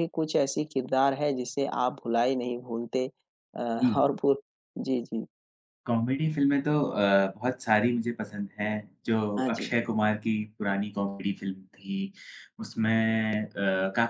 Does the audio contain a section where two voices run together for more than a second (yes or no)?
no